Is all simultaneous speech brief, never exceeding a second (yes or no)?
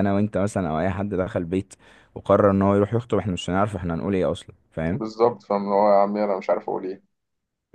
yes